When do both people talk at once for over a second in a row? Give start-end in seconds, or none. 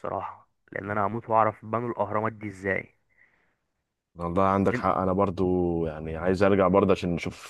none